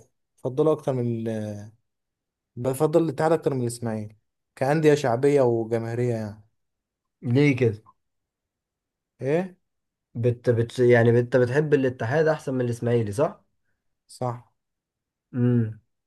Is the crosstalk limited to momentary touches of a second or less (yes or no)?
yes